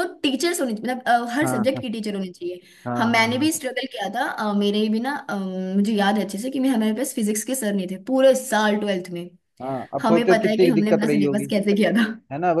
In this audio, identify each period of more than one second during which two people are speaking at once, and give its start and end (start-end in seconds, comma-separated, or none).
10.0-11.4